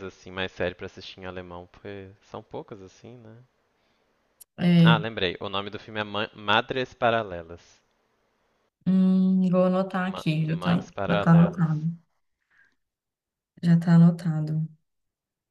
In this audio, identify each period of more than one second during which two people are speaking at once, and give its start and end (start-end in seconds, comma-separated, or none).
10.0-11.7